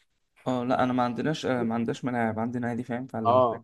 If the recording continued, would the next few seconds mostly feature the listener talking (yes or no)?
yes